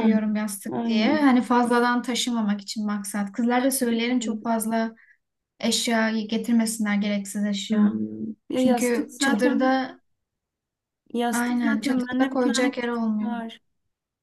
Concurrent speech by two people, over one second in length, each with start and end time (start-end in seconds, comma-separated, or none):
8.5-9.8, 11.3-13.3